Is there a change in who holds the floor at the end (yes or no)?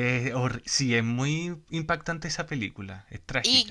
yes